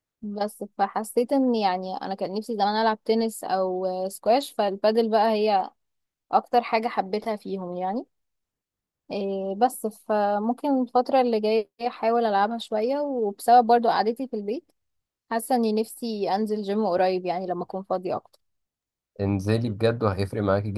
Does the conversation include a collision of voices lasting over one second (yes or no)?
no